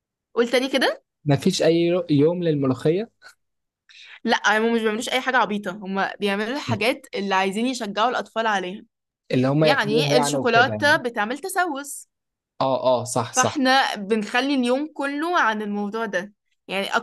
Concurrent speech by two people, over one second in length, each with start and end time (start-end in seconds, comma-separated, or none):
9.6-11.0